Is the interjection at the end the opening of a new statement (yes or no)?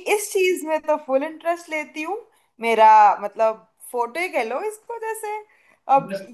no